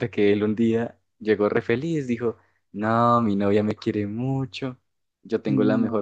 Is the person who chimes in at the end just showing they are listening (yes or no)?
yes